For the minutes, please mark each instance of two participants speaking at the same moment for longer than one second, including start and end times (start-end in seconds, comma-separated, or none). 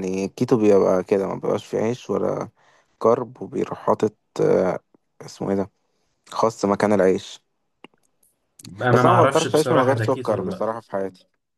8.9-10.7